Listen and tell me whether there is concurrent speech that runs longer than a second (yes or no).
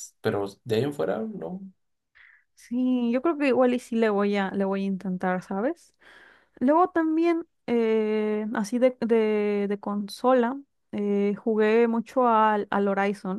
no